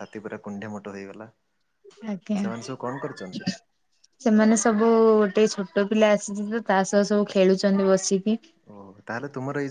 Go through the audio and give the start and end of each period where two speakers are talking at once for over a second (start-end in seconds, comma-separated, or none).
none